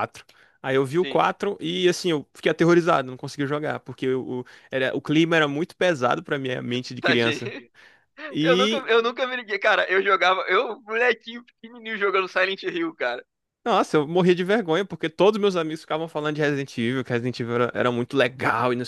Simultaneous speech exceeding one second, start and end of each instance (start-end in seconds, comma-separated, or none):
none